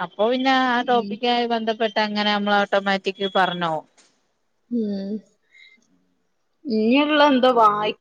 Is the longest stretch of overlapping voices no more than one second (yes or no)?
yes